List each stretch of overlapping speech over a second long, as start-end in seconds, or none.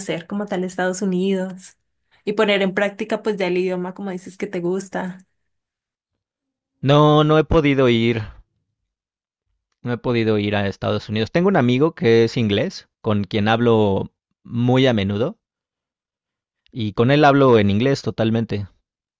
none